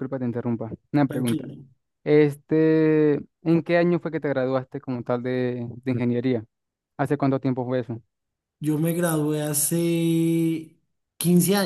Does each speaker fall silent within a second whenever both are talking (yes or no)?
yes